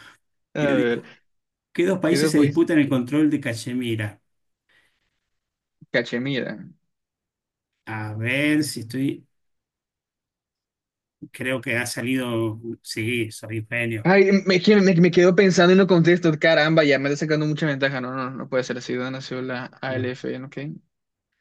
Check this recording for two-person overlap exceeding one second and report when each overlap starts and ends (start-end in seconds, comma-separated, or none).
none